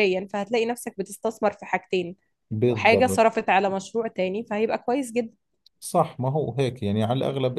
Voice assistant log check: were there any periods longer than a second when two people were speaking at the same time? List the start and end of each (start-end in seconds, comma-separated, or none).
none